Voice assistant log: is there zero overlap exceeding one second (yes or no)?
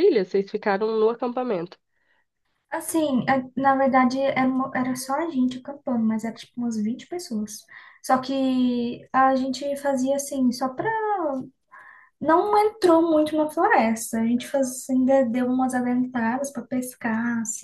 yes